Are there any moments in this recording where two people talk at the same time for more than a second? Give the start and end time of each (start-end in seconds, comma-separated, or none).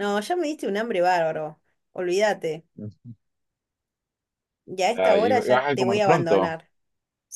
4.9-6.5